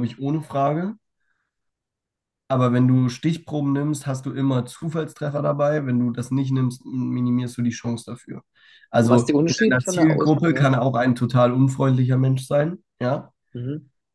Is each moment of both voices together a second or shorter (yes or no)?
no